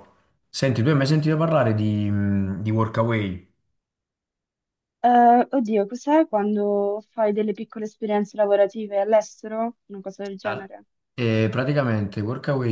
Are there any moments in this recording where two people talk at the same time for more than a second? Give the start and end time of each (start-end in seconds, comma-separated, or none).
none